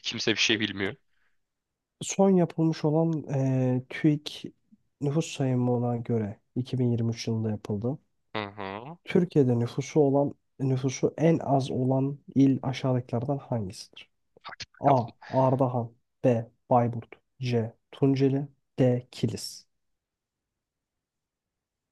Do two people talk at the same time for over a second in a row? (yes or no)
no